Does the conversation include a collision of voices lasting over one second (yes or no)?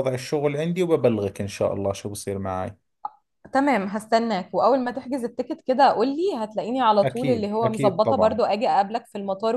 yes